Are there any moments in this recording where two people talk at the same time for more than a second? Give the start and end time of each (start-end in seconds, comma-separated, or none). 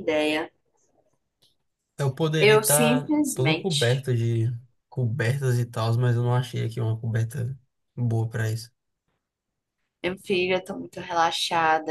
2.4-4.1